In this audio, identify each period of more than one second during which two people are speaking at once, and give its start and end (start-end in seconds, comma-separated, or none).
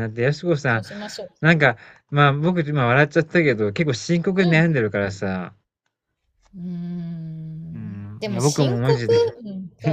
7.7-9.1